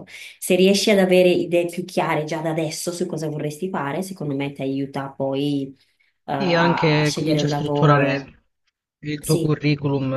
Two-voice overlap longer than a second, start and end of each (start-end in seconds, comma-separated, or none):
6.4-8.3